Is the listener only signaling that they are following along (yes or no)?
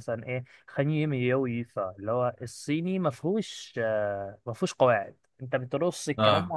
yes